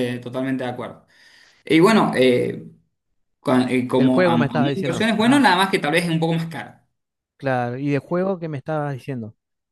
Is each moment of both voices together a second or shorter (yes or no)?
no